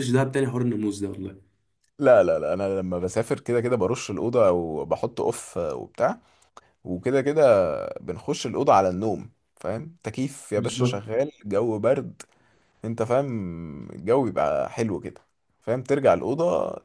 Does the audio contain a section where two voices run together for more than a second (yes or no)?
no